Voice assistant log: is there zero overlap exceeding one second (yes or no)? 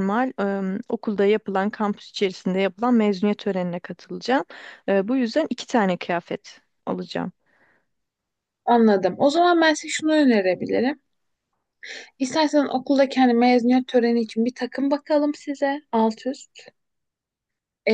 yes